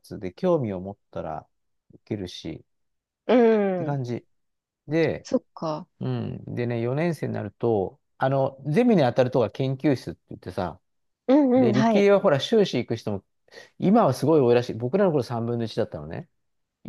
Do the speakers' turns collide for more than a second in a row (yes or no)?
no